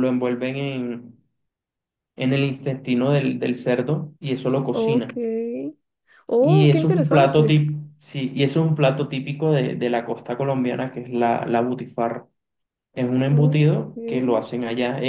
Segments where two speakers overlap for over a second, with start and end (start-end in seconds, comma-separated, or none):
6.4-7.6